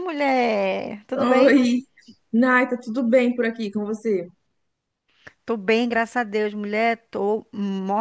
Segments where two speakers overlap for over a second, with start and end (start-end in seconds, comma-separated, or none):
none